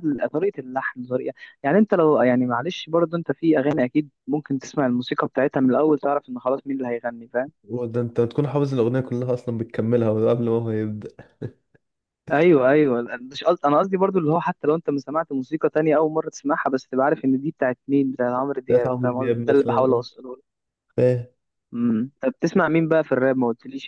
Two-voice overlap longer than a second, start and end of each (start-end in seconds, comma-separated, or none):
18.7-20.0